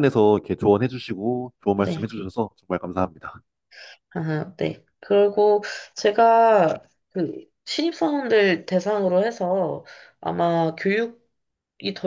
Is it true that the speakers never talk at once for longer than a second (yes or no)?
yes